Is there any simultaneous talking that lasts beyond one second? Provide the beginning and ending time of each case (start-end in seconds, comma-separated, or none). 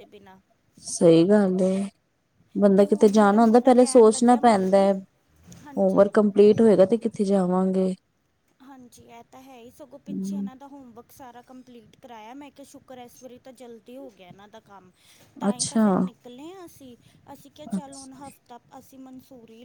2.8-4.9